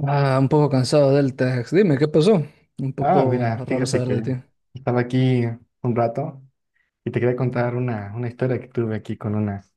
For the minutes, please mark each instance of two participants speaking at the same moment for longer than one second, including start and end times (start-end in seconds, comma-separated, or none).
3.0-4.2